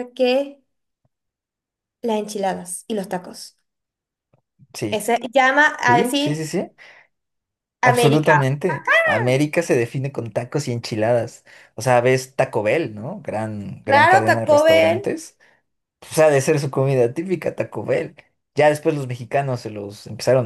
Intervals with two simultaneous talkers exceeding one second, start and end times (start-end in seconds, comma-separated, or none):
13.8-15.1